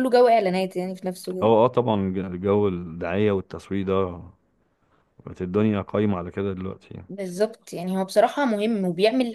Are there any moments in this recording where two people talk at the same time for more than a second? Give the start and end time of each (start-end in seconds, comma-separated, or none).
none